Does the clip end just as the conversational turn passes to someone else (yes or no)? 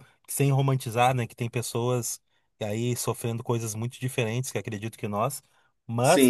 yes